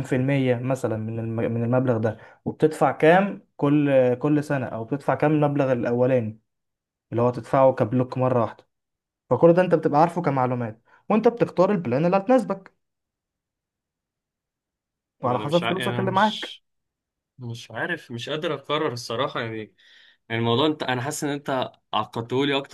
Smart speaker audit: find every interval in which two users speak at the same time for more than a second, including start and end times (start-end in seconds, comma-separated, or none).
15.2-16.6